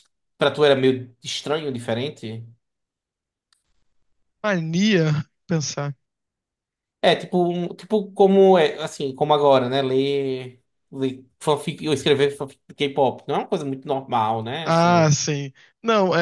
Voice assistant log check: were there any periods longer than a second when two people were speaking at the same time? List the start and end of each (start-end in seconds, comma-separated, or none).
none